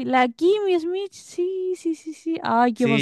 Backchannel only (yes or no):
no